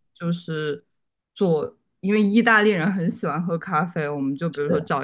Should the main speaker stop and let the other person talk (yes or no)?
no